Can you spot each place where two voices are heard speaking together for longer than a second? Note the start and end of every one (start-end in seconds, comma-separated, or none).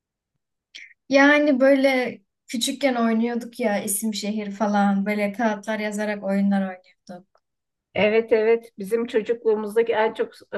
none